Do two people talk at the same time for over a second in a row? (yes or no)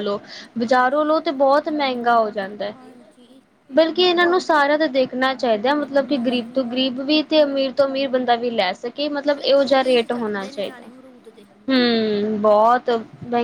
yes